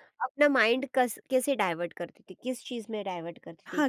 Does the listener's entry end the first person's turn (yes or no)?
yes